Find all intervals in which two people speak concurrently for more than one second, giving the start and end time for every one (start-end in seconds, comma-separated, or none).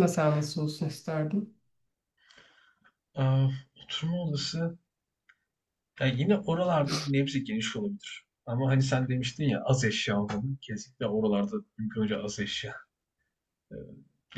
none